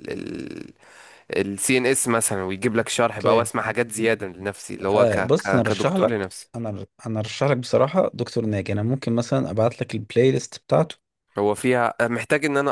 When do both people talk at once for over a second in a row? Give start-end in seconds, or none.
5.0-6.5